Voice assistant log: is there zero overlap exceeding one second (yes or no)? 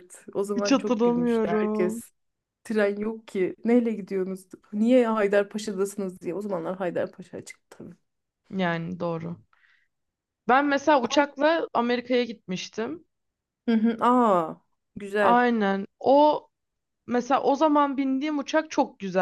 no